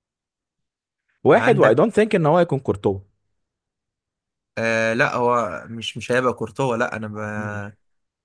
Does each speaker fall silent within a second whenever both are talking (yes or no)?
yes